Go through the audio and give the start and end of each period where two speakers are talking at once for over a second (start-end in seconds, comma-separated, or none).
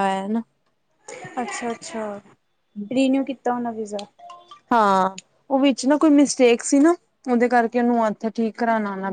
none